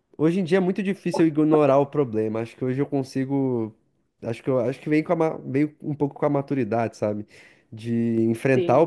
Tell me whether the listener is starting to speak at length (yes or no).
no